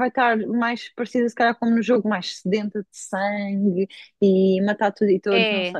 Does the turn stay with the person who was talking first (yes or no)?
no